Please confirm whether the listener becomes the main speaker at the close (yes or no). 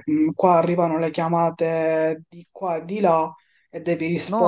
yes